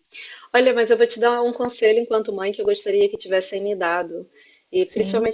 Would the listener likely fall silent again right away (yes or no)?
yes